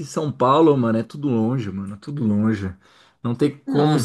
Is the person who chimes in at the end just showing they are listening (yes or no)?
yes